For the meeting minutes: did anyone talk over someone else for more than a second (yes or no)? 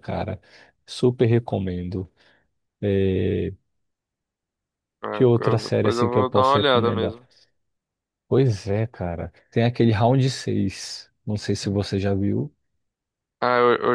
yes